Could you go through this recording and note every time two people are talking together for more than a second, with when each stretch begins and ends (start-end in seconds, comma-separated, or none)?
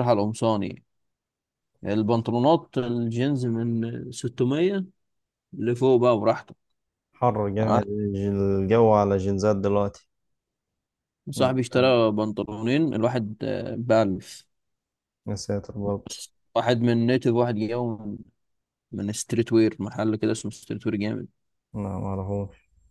none